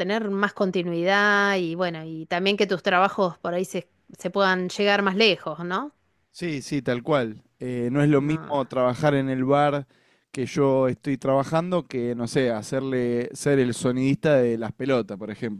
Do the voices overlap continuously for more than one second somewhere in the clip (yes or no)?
no